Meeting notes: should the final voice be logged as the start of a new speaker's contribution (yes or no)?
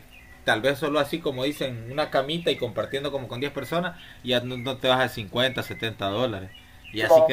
no